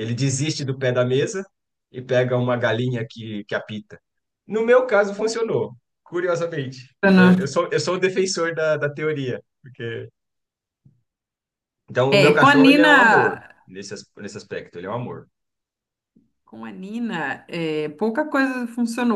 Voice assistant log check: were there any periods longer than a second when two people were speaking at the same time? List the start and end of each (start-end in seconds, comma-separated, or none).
12.1-13.5